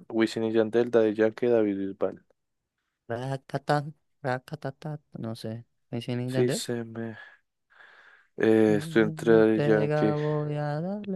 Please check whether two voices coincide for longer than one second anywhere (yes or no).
yes